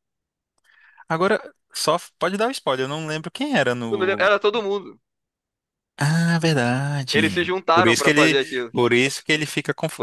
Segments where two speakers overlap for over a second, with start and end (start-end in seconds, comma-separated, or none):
7.1-8.7